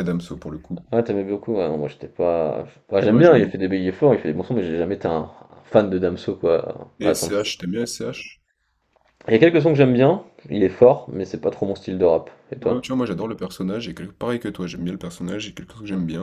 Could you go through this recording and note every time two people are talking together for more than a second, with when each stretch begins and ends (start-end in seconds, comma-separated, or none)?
none